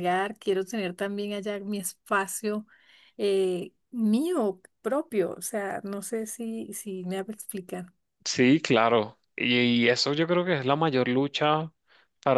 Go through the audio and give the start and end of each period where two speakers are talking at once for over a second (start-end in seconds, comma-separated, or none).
none